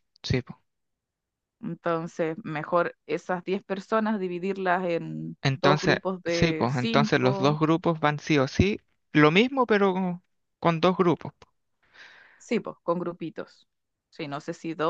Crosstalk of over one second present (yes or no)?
yes